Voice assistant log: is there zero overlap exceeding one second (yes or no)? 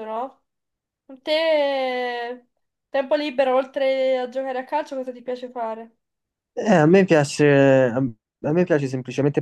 yes